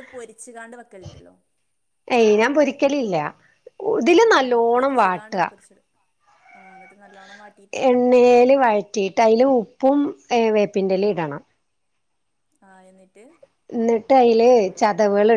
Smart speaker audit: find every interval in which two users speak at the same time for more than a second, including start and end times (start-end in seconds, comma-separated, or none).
none